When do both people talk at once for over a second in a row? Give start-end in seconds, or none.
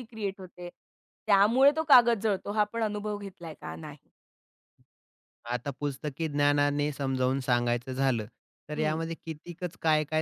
none